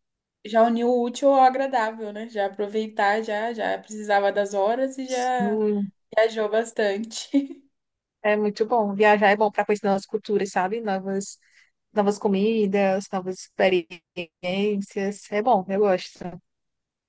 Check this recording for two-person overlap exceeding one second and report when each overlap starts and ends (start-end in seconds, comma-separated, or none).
none